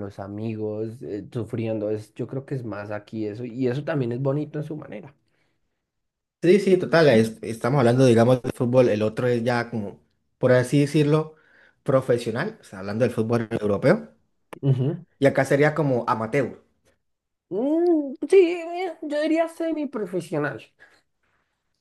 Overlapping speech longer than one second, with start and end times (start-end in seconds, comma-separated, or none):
none